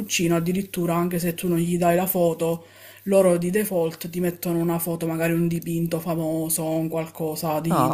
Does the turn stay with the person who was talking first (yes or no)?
no